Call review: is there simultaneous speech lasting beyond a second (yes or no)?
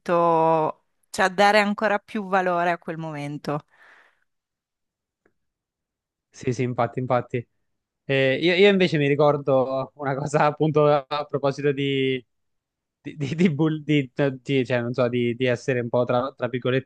no